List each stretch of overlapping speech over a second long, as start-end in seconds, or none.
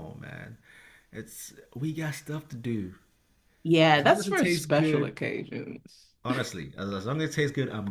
4.0-5.2